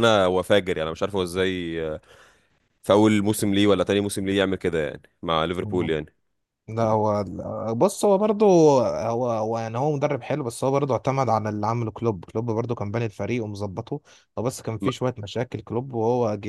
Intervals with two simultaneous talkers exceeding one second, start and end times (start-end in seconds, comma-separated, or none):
none